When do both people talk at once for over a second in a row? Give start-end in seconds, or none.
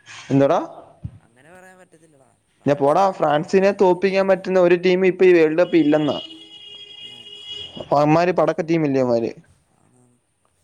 2.6-4.6